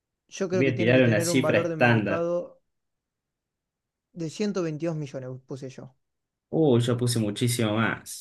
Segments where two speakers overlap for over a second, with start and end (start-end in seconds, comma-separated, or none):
0.5-2.3